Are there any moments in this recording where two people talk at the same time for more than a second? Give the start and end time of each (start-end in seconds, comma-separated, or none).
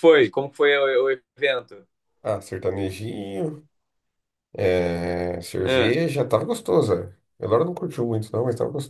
none